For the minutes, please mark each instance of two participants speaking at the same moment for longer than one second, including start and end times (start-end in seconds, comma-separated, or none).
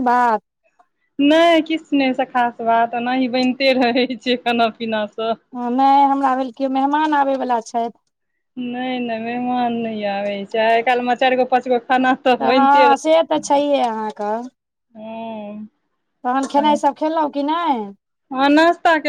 none